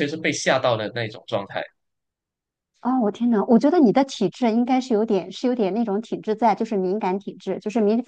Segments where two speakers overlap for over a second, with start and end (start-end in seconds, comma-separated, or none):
none